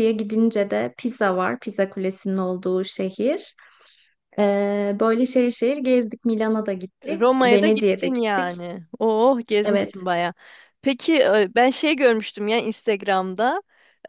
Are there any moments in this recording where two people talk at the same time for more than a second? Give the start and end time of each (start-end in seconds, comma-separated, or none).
7.0-8.5